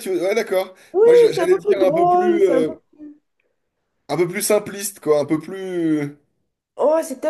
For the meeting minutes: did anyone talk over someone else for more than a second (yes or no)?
yes